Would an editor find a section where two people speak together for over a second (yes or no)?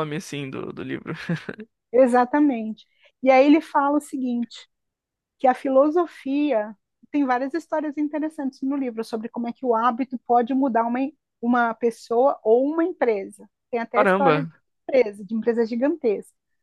no